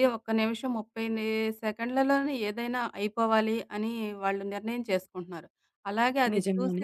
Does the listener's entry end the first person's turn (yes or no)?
no